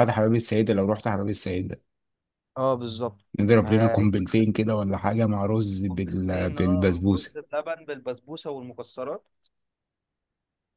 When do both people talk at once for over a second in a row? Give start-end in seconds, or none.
5.9-7.4